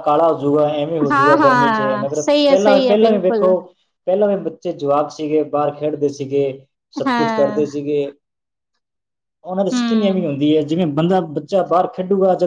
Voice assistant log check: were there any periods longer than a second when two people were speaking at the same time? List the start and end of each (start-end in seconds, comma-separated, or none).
1.1-3.5